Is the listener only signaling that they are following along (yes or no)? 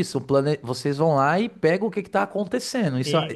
no